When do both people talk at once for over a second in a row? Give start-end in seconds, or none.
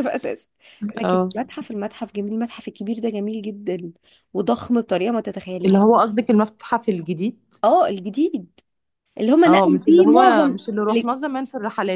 9.4-11.1